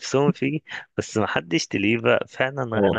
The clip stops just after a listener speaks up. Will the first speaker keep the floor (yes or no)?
no